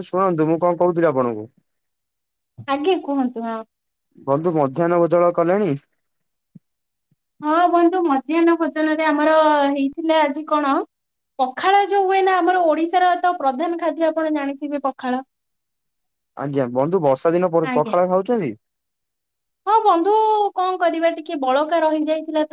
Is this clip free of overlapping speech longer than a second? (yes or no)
yes